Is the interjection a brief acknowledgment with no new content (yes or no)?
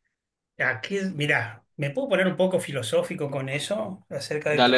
yes